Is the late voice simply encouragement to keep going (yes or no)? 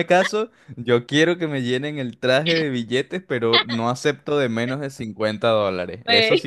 yes